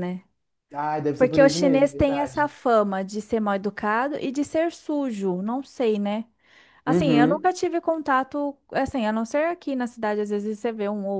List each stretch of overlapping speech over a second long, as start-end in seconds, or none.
1.2-2.5